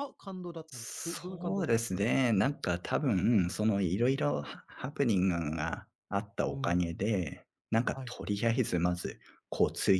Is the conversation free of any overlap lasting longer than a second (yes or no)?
no